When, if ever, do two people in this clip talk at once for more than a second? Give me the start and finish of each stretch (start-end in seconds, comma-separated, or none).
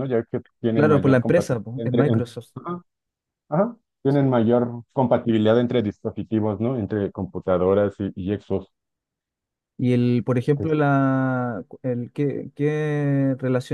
0.7-2.5